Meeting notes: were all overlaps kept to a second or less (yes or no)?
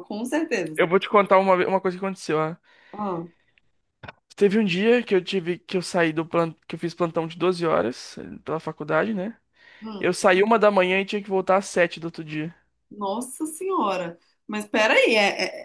yes